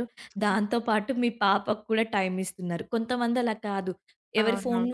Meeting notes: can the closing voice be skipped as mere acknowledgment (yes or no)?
yes